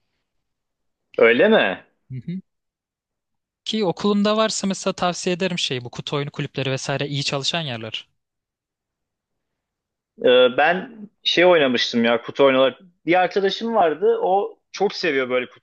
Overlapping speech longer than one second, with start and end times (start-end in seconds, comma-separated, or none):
none